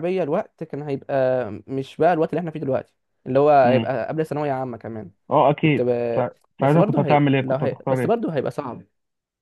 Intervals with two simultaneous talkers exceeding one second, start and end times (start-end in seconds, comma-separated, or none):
6.6-8.2